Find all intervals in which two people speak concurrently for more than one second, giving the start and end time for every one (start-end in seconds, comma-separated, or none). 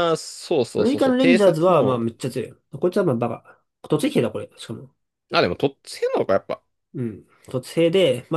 0.8-2.0